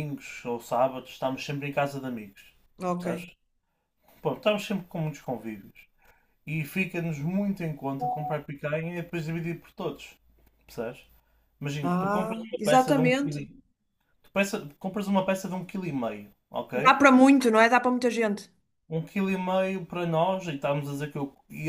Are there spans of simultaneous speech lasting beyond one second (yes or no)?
yes